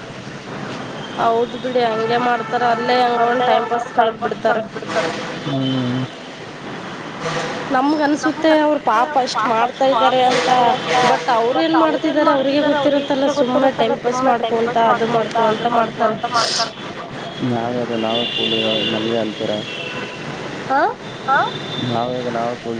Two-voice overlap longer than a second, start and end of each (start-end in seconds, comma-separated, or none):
11.6-16.2